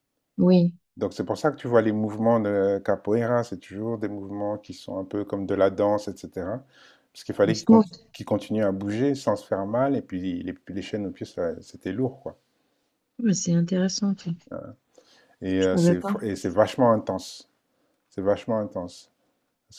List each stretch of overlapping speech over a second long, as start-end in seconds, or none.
none